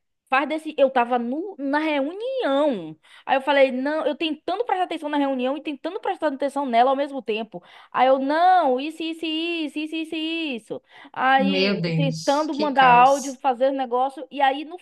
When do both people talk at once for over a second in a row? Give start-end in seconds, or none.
11.3-13.4